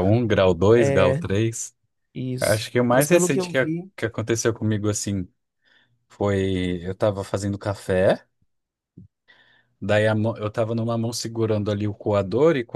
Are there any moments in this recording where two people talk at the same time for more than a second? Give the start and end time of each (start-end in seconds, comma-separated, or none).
2.4-3.9